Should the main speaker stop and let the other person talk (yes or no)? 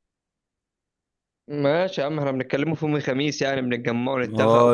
yes